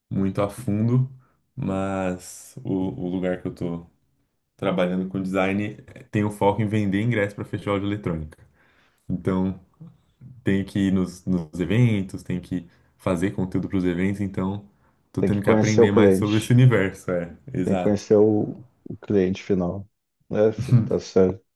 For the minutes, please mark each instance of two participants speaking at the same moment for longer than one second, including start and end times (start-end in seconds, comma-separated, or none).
15.2-16.6